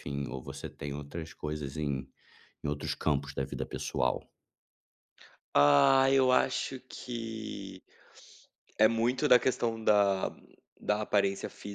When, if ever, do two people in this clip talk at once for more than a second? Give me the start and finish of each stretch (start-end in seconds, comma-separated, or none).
none